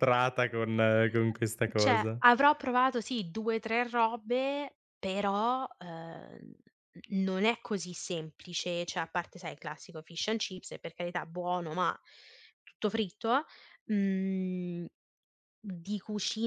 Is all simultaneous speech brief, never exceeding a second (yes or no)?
yes